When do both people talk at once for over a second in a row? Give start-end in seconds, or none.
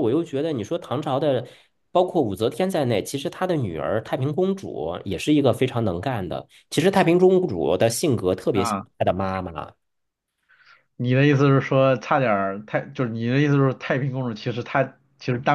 none